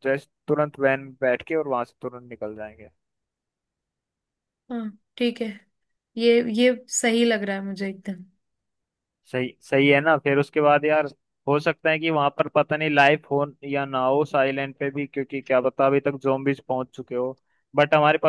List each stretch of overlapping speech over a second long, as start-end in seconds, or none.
none